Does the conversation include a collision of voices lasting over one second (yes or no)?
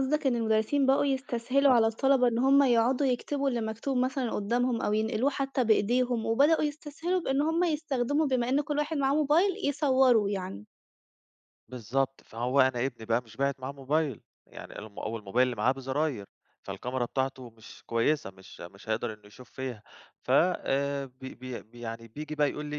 no